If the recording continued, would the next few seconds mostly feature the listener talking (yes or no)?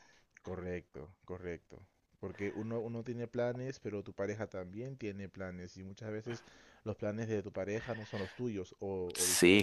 yes